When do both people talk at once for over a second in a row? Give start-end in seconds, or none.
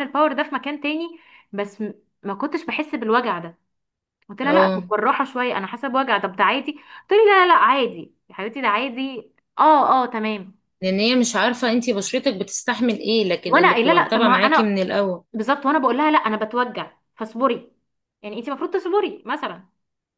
13.5-14.8